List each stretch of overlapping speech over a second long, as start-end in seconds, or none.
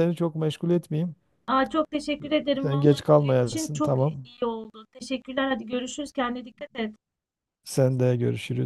2.6-4.3